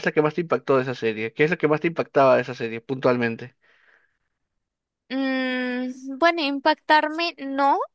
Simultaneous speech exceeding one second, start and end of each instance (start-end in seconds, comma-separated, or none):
none